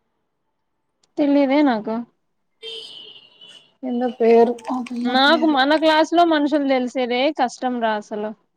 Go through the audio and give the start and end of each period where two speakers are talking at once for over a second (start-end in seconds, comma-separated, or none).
none